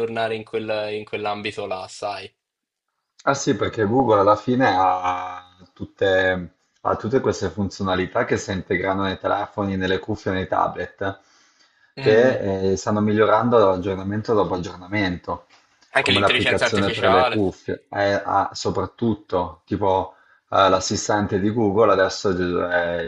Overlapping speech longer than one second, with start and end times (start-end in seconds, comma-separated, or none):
16.0-17.4